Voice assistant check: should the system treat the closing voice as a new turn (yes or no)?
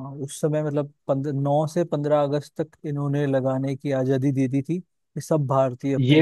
no